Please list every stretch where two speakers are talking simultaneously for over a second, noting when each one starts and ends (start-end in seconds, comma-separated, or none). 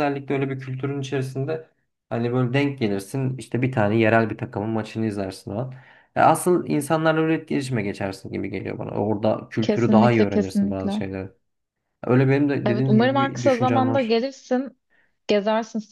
9.6-11.0, 12.7-14.2